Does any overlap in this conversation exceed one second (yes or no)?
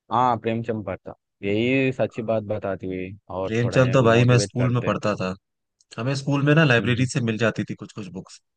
yes